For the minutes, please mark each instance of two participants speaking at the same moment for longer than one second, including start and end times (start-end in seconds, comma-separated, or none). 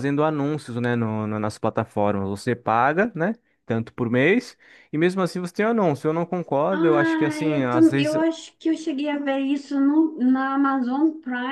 6.7-8.2